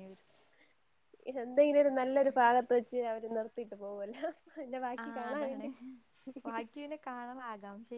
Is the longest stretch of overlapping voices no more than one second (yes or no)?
yes